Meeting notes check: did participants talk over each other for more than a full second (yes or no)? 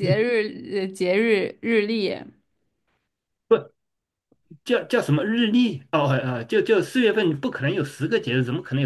no